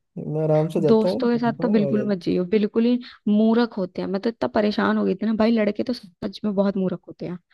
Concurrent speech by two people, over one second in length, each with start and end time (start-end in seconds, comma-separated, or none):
0.9-2.2